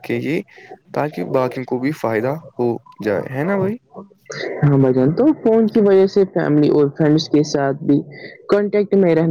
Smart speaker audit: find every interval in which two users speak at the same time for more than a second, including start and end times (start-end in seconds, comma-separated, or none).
none